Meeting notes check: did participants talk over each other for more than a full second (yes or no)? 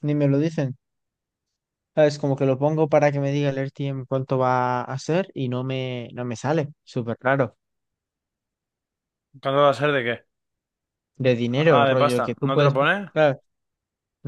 yes